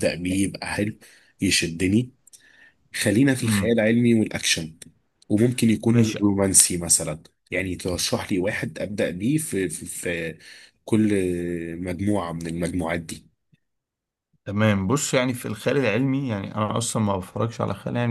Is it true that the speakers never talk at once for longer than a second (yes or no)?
yes